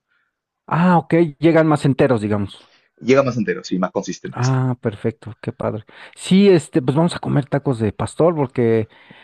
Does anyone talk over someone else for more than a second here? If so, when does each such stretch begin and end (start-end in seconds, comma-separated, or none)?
none